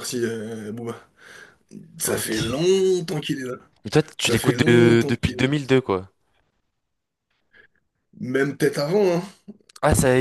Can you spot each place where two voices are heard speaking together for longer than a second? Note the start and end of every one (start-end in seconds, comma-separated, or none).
4.2-5.5